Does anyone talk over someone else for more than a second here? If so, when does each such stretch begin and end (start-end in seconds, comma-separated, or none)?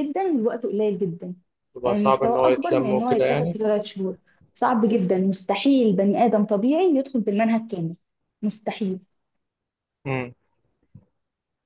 1.8-3.6